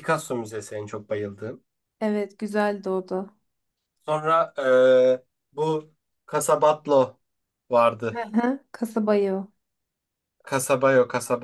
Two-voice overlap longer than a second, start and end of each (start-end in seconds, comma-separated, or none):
none